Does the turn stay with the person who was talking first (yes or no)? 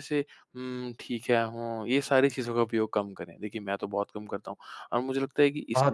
yes